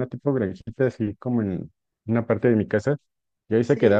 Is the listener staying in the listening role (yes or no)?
yes